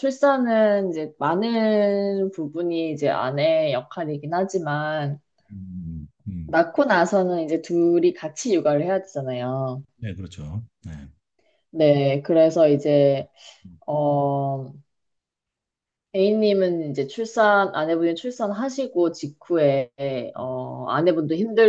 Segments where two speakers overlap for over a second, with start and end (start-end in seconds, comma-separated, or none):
none